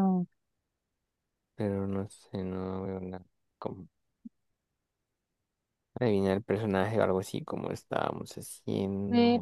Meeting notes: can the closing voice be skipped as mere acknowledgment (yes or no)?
no